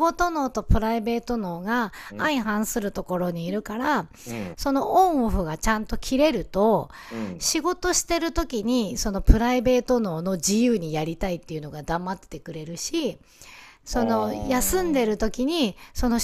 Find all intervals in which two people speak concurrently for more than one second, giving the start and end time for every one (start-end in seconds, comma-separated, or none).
13.9-15.3